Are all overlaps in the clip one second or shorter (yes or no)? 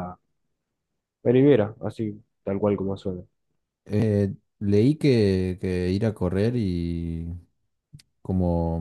yes